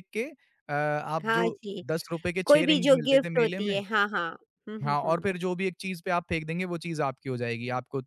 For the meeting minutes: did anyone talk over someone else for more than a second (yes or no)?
yes